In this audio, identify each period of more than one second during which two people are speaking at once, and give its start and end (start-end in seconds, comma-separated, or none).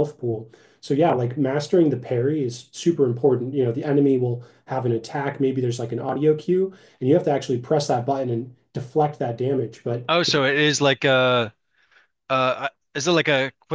none